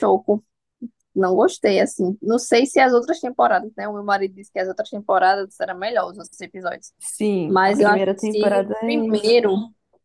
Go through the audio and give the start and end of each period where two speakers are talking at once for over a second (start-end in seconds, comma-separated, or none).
7.5-9.3